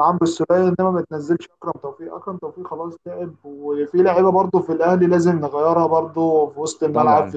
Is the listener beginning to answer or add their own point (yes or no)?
no